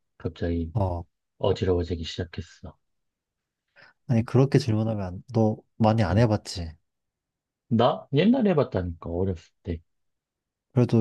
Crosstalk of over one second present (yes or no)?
no